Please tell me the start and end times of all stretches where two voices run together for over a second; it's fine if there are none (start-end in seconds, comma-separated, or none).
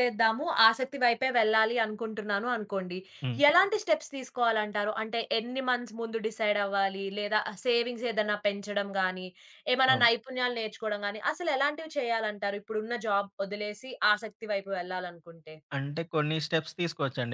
none